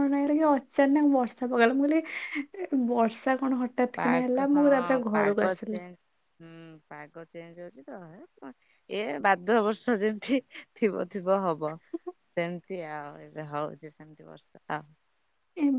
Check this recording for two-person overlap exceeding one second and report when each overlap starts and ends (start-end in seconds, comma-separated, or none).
4.0-5.8